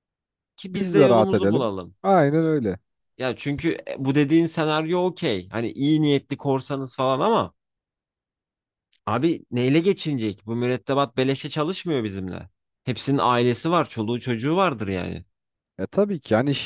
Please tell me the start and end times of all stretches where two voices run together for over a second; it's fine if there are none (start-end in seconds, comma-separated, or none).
0.7-1.9